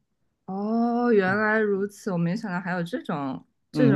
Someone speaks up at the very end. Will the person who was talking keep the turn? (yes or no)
no